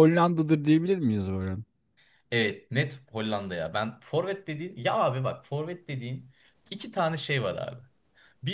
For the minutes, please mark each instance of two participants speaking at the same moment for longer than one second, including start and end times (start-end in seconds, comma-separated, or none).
none